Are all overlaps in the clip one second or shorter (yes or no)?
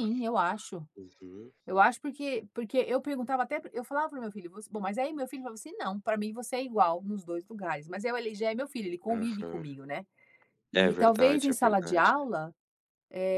no